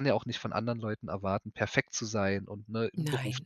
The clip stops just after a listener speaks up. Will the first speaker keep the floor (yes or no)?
yes